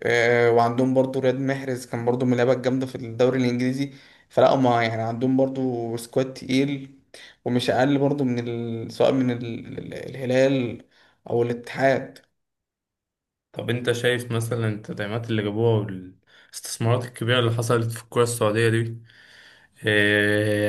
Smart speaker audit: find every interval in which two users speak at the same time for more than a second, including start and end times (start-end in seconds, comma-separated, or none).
none